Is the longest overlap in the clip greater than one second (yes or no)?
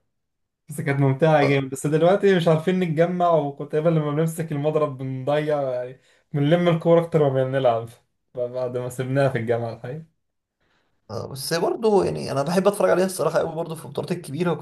no